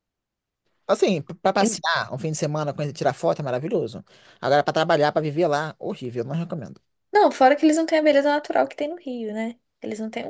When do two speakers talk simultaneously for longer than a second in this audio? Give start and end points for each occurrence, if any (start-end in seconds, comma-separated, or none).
none